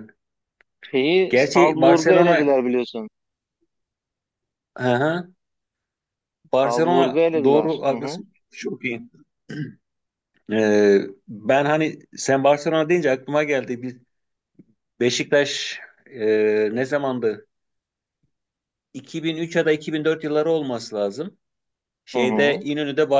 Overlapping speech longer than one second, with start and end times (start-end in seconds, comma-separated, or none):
1.3-2.5, 6.6-8.2